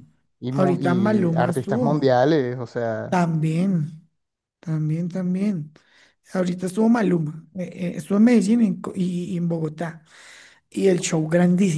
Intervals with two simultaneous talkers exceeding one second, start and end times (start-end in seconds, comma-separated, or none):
0.5-2.2